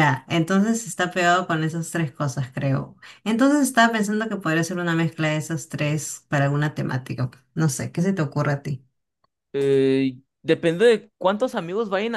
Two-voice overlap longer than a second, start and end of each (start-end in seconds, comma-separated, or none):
none